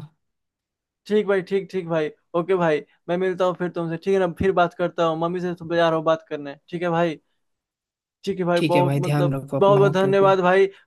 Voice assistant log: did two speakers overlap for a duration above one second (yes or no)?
yes